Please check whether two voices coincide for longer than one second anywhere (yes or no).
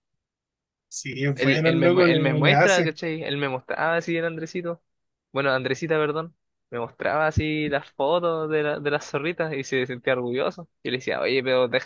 yes